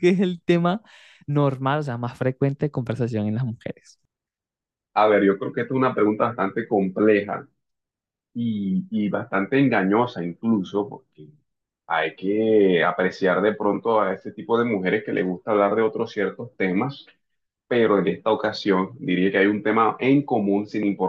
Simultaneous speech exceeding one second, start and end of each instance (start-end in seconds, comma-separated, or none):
none